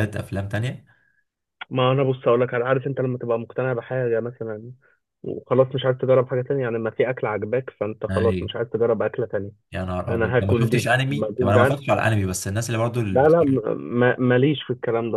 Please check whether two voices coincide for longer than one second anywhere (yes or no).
yes